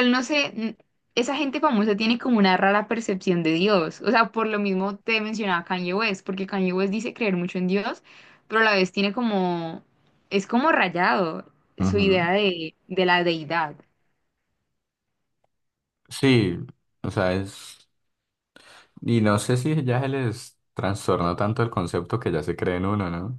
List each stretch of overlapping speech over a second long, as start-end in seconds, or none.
none